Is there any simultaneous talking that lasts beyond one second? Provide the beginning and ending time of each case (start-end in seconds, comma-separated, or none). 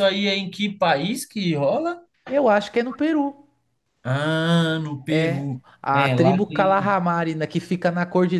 5.1-7.0